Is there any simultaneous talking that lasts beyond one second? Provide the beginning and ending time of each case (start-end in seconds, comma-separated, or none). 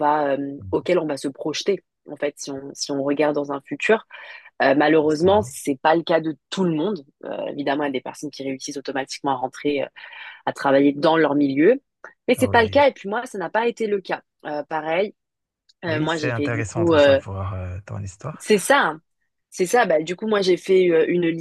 15.9-17.2